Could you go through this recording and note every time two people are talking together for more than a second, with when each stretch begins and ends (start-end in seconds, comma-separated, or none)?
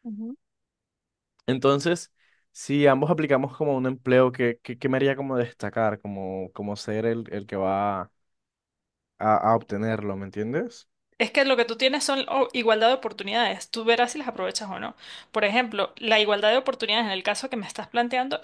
none